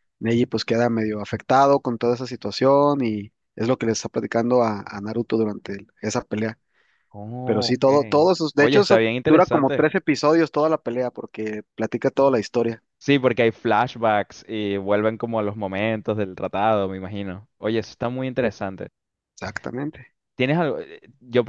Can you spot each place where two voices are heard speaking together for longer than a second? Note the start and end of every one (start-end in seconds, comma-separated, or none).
7.4-9.9